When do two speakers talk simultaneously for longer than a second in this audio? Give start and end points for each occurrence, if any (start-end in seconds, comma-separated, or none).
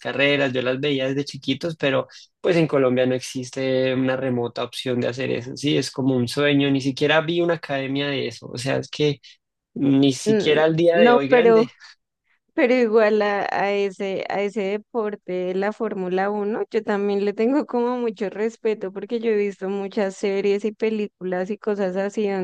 10.2-11.6